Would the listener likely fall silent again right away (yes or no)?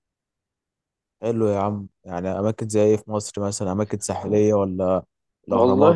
no